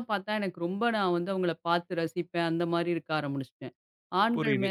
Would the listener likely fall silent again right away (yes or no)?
yes